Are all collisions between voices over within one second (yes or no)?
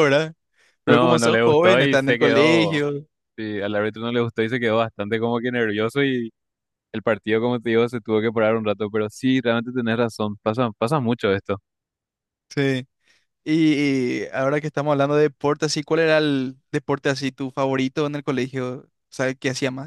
no